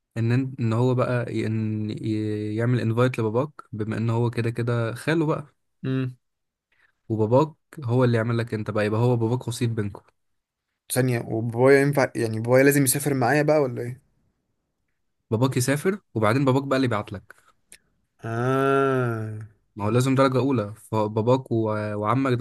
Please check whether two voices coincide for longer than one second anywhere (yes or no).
no